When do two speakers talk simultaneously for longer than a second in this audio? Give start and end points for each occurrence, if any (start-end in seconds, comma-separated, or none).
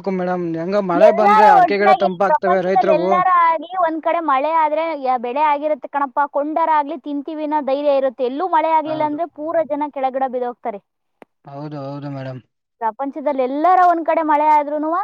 1.1-3.1